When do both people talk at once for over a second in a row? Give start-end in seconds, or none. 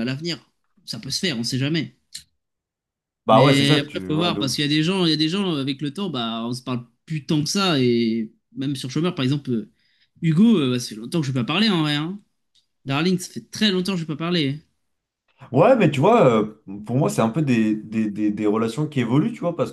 3.3-4.6